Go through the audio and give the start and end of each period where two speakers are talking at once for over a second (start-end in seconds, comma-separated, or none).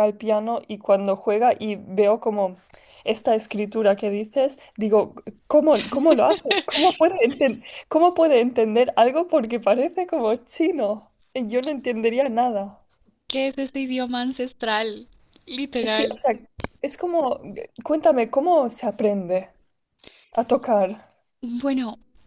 none